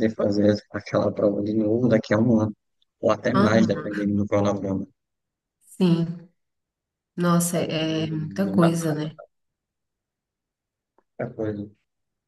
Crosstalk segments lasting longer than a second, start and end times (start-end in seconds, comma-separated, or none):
7.5-9.1